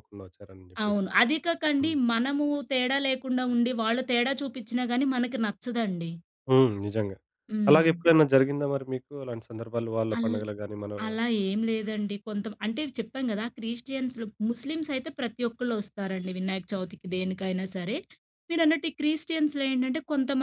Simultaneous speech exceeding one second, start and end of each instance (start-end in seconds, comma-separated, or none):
none